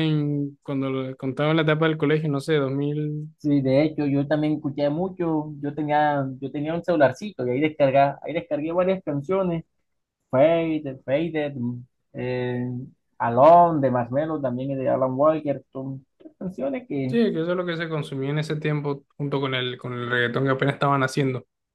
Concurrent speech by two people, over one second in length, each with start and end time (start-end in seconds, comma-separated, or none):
none